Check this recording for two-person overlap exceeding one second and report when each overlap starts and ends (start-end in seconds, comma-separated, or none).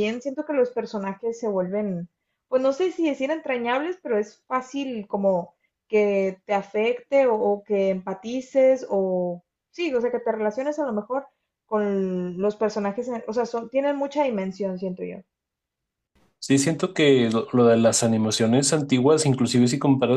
none